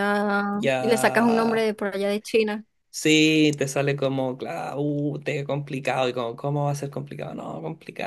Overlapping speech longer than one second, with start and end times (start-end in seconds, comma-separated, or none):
0.5-1.7